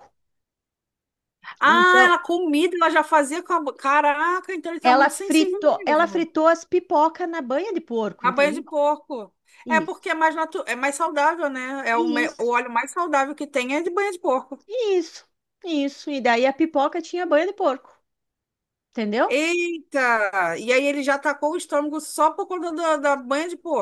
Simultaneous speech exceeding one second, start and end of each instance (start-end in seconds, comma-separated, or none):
4.8-6.3